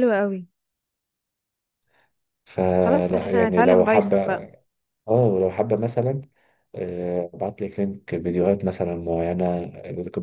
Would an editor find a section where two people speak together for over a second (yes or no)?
yes